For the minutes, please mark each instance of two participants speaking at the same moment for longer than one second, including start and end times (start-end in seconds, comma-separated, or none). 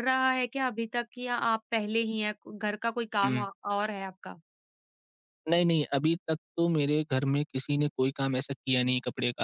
none